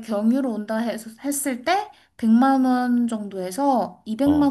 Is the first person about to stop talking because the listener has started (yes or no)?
no